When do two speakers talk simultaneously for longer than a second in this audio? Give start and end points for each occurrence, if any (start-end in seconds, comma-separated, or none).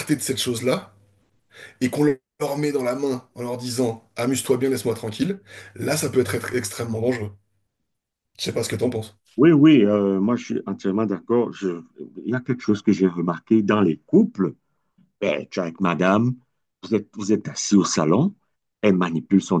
none